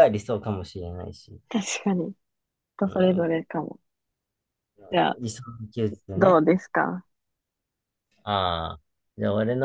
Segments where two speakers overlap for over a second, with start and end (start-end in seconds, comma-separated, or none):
none